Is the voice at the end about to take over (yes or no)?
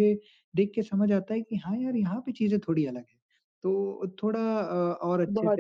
no